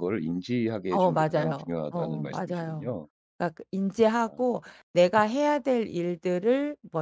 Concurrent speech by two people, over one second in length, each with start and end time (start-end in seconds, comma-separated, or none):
0.9-3.0